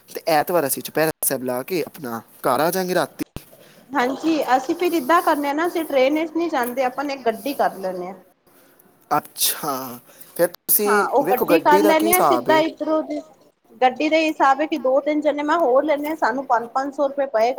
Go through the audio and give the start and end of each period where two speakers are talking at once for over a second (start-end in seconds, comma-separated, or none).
none